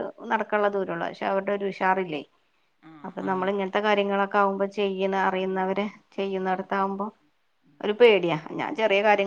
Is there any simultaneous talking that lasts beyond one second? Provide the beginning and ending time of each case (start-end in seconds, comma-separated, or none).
5.4-7.0